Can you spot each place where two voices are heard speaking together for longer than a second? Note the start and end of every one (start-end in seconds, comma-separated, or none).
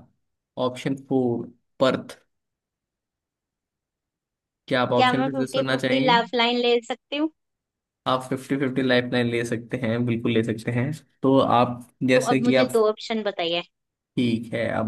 5.0-6.2